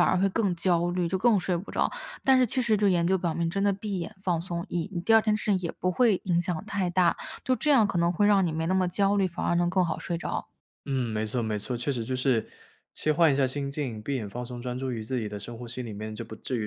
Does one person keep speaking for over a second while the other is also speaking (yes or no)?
no